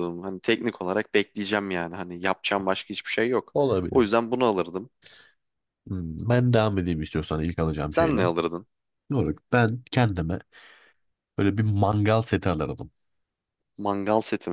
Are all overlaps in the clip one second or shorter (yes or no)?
yes